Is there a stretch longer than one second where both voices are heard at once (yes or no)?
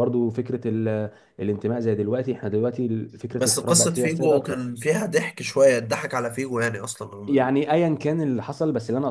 yes